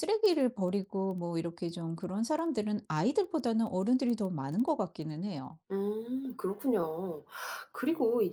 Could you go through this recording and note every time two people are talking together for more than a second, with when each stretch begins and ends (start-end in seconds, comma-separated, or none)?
none